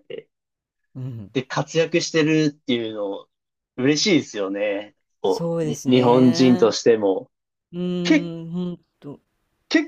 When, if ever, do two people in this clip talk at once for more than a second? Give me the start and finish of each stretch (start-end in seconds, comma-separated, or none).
5.2-6.8